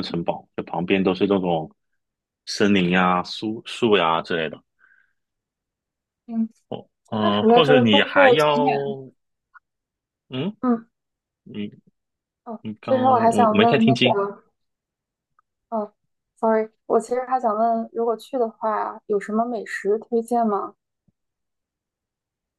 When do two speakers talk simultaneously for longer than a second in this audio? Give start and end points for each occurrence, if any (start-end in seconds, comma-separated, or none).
7.2-8.7, 12.6-14.2